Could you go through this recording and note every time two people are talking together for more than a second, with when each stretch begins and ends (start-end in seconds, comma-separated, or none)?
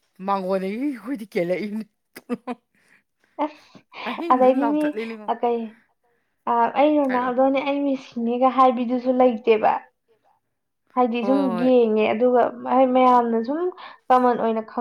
none